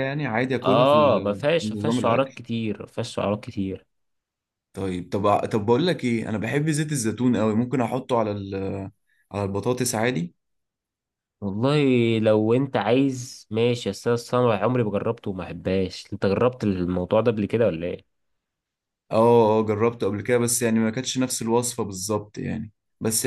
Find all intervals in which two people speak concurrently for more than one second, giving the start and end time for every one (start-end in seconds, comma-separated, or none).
0.6-2.4